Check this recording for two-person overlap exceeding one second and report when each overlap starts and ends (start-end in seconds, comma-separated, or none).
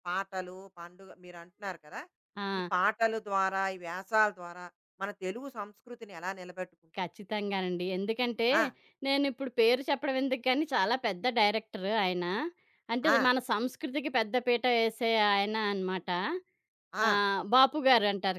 none